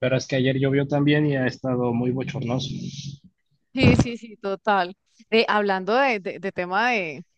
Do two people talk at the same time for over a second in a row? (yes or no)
no